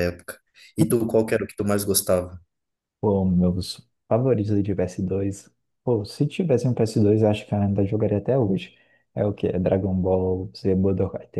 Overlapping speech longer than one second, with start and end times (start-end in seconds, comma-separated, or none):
none